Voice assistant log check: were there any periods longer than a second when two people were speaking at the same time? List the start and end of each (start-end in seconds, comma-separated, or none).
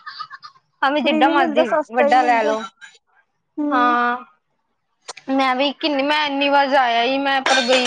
1.0-2.5